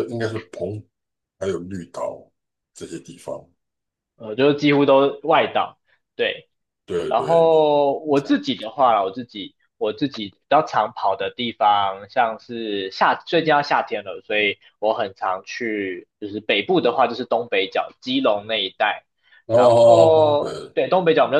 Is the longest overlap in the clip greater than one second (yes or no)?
yes